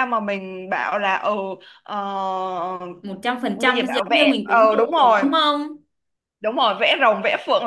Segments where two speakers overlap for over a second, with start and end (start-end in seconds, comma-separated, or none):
3.5-5.2